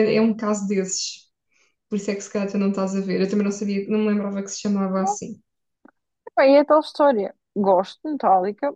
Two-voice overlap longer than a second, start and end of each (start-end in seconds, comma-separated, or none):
none